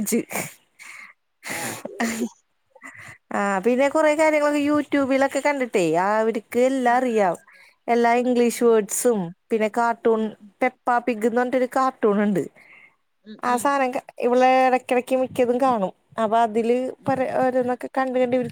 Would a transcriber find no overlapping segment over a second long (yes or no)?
yes